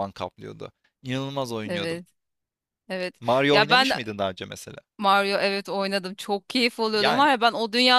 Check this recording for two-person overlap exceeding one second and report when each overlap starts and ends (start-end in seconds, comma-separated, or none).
none